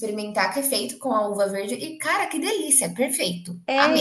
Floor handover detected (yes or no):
yes